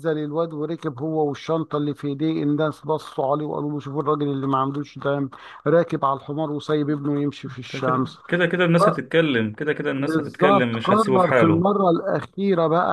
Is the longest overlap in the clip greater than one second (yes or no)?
yes